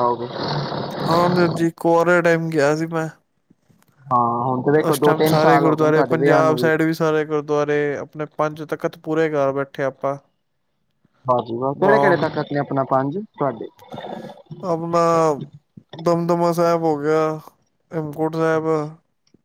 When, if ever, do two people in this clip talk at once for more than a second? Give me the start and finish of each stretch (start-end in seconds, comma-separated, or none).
4.9-6.6